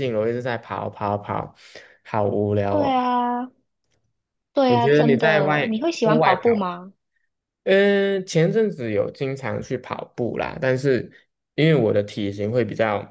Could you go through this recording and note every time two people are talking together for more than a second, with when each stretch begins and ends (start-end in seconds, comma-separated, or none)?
4.7-6.6